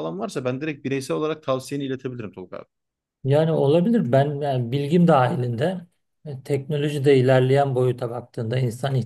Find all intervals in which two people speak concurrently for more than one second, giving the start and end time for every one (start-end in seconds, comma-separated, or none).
none